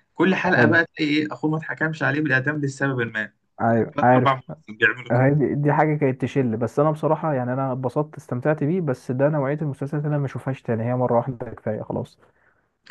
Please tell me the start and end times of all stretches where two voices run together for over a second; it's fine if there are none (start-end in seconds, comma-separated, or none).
none